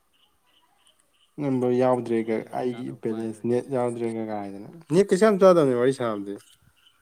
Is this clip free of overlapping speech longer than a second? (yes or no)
no